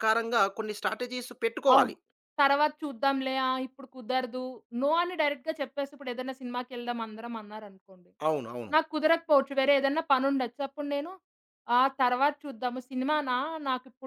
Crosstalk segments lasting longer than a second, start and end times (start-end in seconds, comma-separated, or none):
none